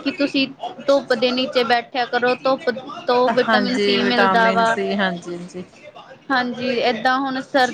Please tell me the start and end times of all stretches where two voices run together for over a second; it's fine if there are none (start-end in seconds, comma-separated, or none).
3.5-4.8